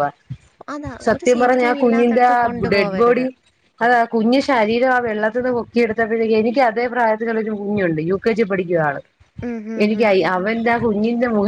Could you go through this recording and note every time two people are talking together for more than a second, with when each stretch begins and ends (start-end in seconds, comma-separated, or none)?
1.1-3.2